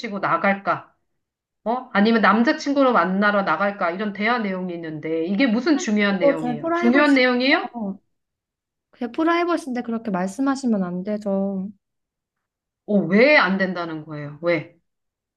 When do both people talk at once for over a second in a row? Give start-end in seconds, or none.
6.0-7.7